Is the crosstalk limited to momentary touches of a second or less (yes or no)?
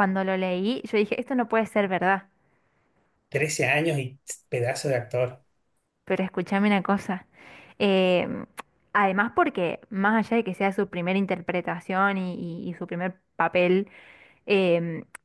yes